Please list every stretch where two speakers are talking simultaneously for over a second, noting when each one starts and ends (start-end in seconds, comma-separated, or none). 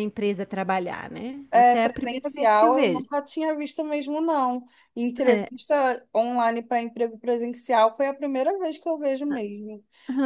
1.5-3.1